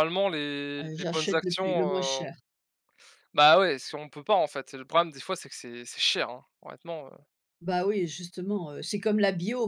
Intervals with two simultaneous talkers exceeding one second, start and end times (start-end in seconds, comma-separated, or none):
0.8-2.3